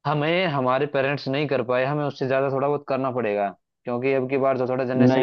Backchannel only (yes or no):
no